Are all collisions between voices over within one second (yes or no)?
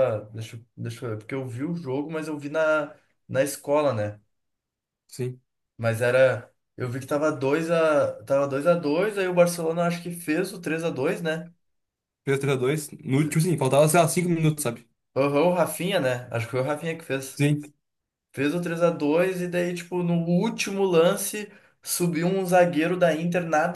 yes